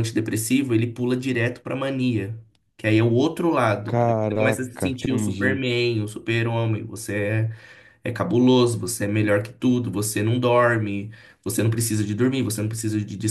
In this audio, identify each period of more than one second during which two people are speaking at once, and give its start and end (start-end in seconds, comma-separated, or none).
3.8-5.6